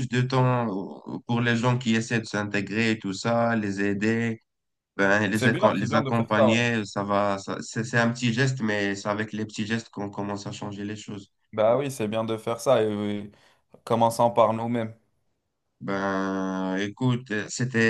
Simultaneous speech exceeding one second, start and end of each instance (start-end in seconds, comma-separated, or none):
5.3-6.6